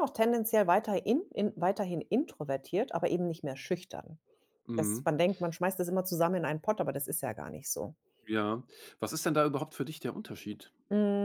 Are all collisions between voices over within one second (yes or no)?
yes